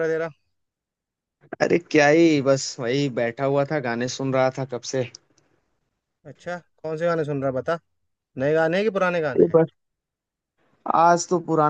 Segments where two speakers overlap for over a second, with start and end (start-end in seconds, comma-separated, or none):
none